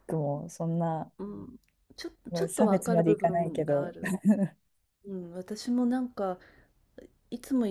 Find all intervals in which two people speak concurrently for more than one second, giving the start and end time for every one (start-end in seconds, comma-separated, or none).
2.5-3.9